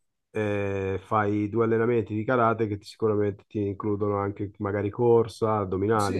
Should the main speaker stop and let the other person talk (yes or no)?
yes